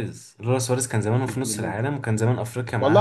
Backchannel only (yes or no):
no